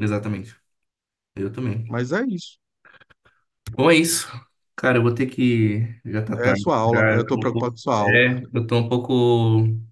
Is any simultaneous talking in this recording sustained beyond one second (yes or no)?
yes